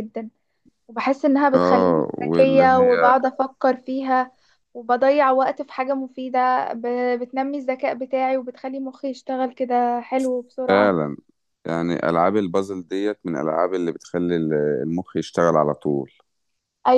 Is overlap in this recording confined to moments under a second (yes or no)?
no